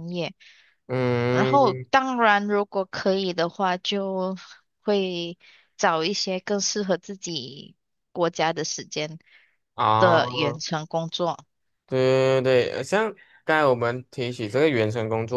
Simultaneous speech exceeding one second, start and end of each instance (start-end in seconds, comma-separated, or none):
none